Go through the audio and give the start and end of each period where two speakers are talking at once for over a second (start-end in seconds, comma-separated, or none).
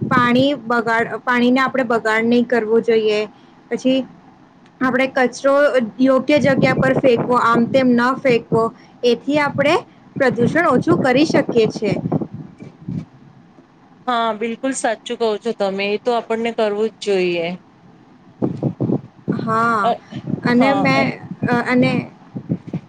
none